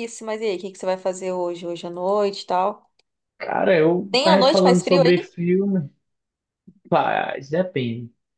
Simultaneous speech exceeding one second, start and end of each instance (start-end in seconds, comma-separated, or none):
4.1-5.3